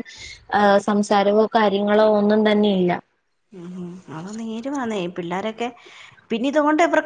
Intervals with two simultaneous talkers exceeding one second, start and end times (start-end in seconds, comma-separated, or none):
none